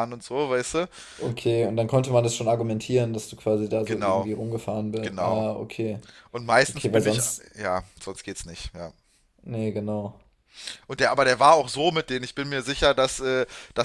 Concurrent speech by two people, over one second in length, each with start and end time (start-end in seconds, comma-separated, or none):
none